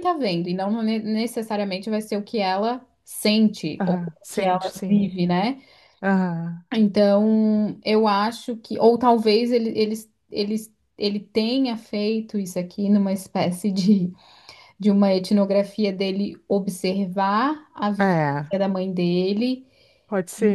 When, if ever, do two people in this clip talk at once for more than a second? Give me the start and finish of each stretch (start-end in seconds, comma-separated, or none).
3.8-5.0